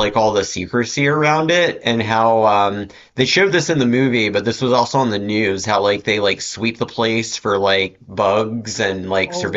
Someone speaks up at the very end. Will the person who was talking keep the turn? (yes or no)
yes